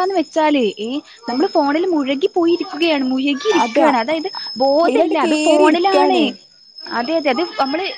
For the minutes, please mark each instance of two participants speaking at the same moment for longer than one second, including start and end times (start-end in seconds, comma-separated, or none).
3.6-6.2